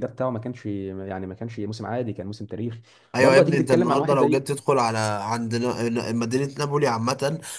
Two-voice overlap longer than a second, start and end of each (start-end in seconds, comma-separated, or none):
3.2-4.4